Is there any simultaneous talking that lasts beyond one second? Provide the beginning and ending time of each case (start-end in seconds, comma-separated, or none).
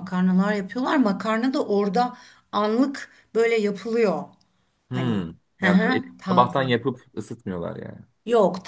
4.9-6.7